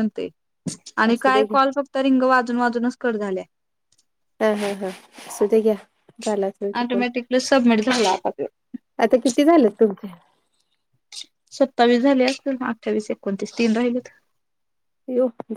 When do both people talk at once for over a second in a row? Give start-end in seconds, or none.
none